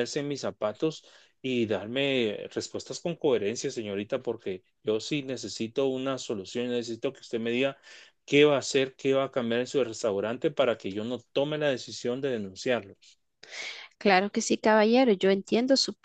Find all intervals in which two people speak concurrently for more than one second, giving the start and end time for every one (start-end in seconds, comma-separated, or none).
none